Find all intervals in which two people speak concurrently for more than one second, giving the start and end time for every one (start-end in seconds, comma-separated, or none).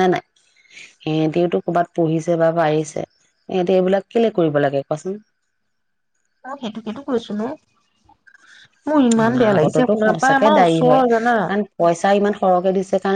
9.2-11.3